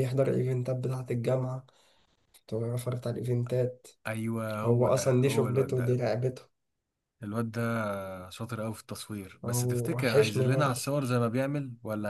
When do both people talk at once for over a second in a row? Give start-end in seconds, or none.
4.6-6.0, 9.4-10.8